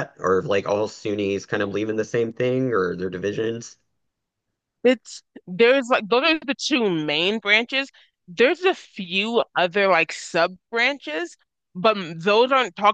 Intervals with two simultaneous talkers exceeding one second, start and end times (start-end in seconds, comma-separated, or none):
none